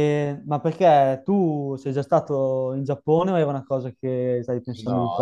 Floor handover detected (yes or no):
yes